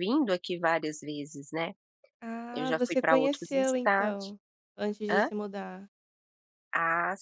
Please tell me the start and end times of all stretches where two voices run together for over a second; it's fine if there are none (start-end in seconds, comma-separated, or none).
2.5-4.3